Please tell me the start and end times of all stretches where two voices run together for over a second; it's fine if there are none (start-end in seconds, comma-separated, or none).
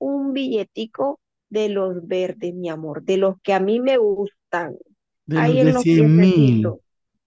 5.3-6.8